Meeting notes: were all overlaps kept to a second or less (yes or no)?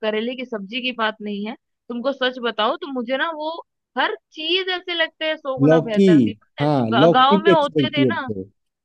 no